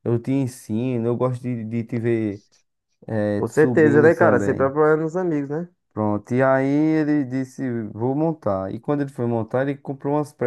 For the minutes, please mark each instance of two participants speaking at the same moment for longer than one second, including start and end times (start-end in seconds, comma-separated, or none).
3.4-4.7